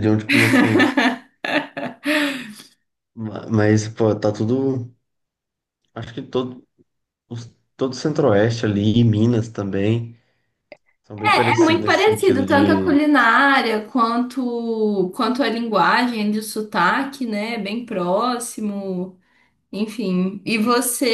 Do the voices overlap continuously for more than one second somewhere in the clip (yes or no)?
yes